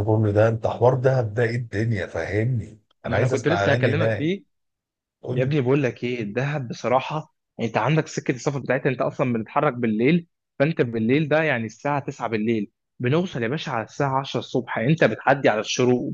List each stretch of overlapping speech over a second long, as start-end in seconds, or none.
3.0-4.3